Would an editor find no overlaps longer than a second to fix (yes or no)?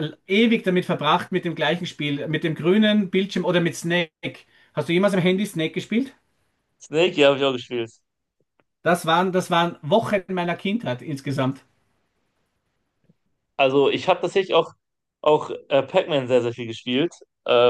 yes